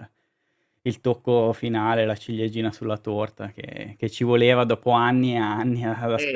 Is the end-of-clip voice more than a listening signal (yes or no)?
yes